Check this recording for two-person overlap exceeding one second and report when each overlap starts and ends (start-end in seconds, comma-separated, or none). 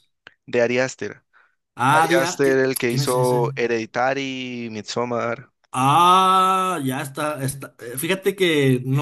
1.9-3.4